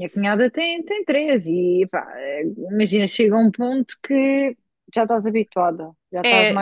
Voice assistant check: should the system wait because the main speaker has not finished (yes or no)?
no